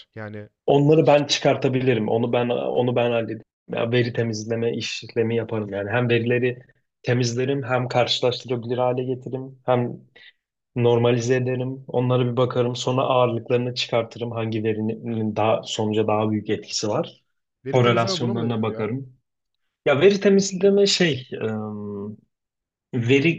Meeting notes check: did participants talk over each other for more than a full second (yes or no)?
yes